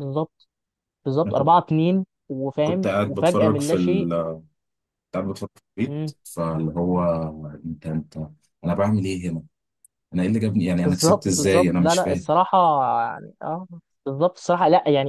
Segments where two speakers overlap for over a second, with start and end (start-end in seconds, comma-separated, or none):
2.6-4.1, 10.8-12.3